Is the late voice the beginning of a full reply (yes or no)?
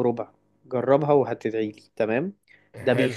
no